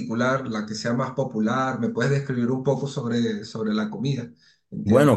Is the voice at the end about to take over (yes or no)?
yes